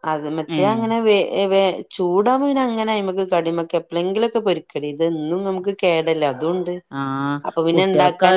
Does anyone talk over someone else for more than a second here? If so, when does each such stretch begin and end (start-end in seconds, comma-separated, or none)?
none